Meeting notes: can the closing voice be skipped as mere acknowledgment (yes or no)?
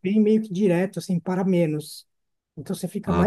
no